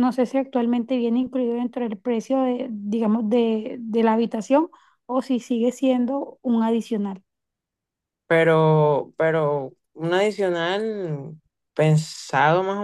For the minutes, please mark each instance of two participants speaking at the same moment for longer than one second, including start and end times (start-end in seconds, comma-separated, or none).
none